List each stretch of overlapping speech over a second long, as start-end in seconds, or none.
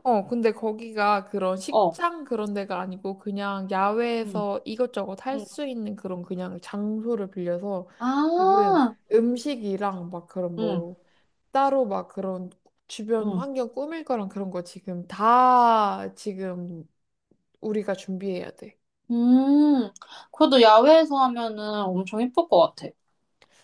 none